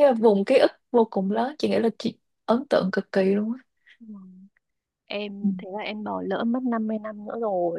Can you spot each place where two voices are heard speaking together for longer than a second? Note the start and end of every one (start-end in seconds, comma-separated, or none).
none